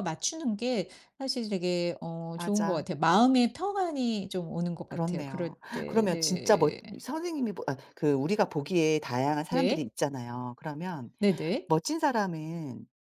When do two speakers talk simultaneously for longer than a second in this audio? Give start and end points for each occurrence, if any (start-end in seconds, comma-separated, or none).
4.9-6.8